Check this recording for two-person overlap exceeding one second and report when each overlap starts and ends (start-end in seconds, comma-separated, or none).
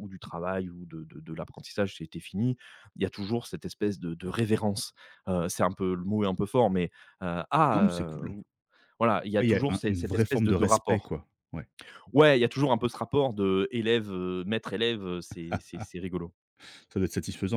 9.4-11.1